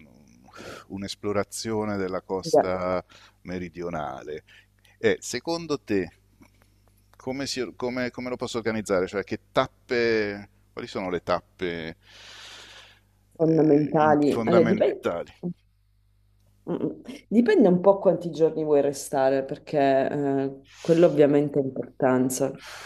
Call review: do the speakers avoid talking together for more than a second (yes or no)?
no